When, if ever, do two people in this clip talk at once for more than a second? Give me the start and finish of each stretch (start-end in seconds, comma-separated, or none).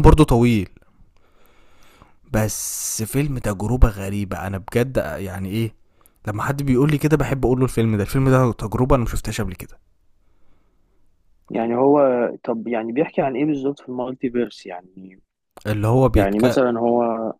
none